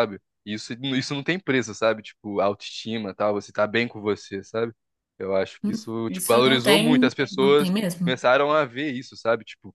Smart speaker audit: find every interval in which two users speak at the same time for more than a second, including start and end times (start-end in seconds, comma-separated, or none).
6.1-8.1